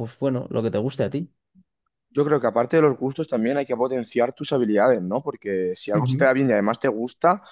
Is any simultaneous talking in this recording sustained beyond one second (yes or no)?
no